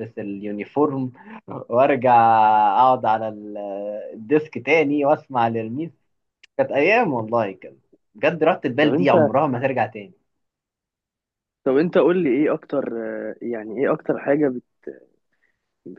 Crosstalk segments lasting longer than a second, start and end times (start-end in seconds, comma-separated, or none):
none